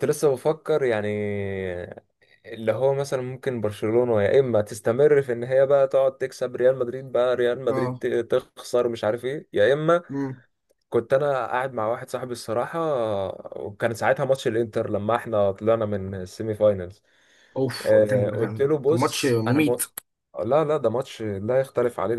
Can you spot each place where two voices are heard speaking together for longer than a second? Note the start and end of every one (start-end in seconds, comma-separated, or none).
17.8-19.8